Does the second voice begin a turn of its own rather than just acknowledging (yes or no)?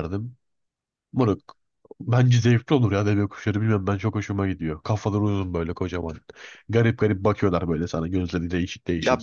yes